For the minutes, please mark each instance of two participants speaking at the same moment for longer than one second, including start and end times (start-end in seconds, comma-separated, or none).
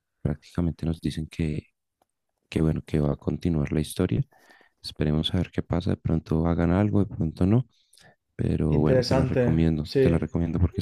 8.7-10.2